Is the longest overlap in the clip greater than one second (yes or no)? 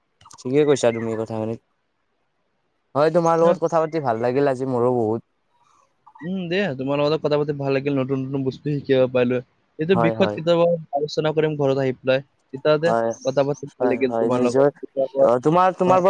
yes